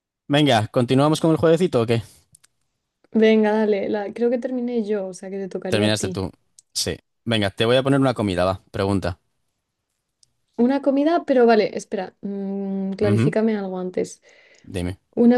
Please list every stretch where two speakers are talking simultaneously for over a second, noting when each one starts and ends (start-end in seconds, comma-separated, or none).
none